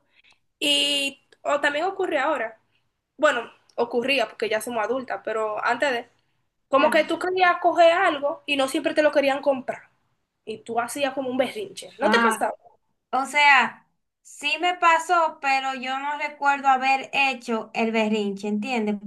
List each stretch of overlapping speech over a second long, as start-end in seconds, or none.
none